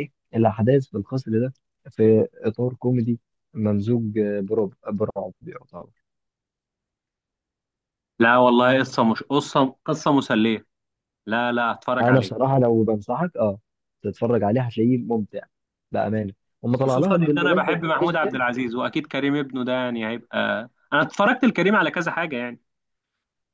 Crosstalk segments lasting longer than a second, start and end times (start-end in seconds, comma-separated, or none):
16.8-18.4